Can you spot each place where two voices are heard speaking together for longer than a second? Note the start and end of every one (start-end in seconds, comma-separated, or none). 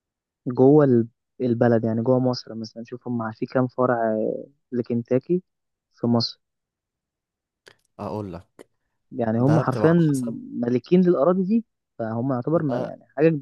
none